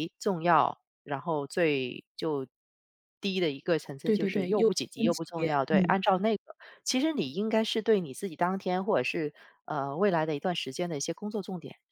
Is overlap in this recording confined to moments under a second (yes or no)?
no